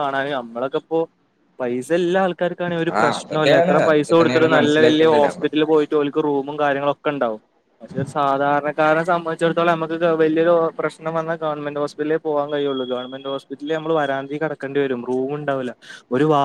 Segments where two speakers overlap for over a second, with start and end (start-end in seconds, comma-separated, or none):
3.0-5.5